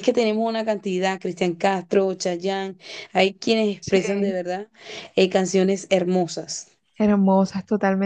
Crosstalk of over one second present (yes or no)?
no